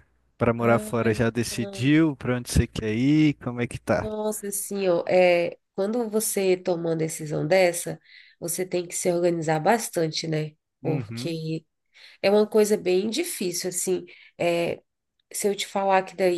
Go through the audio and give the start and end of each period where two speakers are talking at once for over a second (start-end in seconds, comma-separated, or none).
0.6-1.9